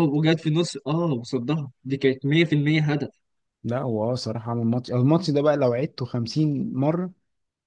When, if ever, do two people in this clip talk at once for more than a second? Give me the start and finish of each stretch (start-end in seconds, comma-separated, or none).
none